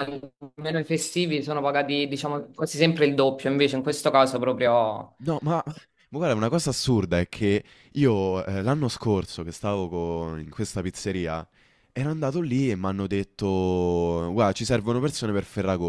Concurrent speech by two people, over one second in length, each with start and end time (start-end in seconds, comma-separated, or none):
none